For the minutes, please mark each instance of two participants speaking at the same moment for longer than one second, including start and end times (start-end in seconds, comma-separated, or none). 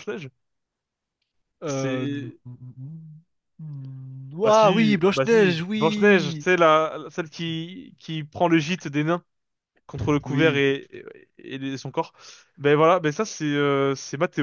4.5-6.5